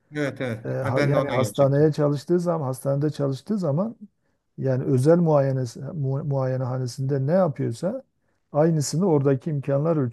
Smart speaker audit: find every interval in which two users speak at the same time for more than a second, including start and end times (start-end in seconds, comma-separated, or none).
0.6-1.9